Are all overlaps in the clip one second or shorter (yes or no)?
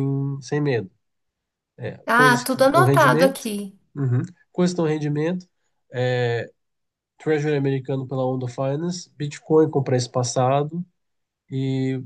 no